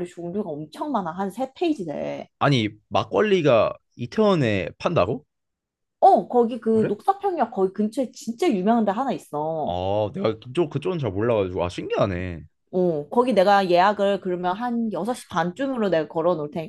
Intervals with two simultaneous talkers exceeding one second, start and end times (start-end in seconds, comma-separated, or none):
none